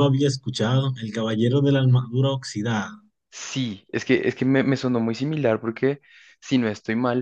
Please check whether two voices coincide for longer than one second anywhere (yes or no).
no